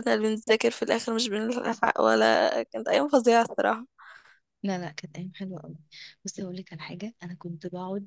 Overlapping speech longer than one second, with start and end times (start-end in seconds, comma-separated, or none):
none